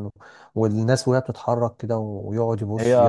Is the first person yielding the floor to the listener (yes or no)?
no